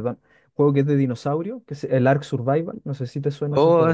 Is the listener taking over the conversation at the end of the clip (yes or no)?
yes